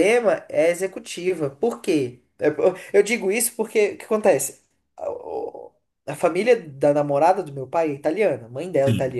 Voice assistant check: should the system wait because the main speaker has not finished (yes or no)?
yes